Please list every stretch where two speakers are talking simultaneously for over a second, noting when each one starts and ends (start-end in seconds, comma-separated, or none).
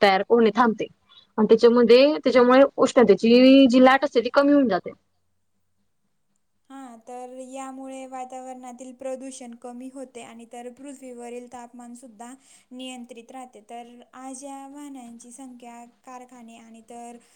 none